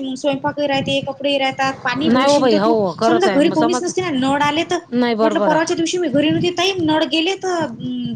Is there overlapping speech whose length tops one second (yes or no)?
yes